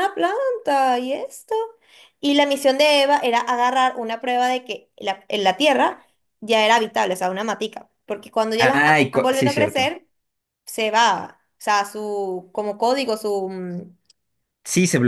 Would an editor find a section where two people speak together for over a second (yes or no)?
yes